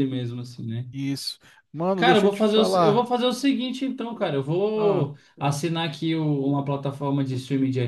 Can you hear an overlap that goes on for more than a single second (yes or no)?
yes